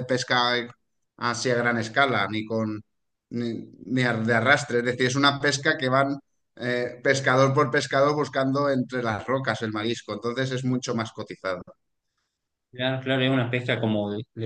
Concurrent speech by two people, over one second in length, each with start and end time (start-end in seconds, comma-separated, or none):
none